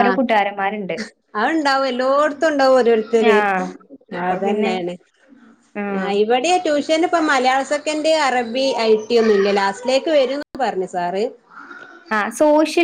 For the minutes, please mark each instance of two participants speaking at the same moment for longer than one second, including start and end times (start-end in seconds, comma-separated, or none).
none